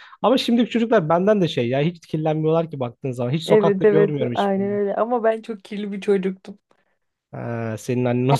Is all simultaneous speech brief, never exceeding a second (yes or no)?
no